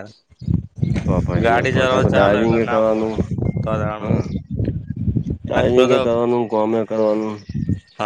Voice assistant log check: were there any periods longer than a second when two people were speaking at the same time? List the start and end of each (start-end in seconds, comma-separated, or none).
1.4-3.1